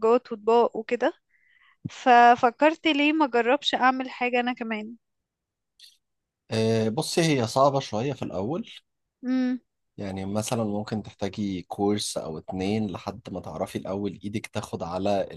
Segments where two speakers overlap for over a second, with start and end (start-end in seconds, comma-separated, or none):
none